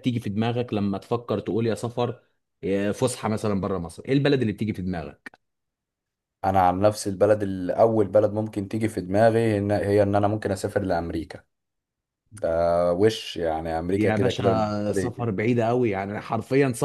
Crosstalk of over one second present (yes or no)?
yes